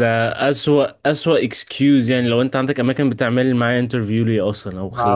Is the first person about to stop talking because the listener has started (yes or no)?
yes